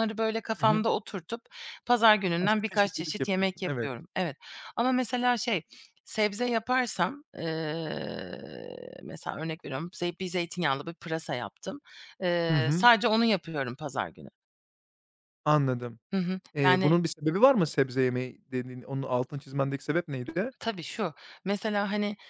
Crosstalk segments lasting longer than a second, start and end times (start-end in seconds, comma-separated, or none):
2.4-3.9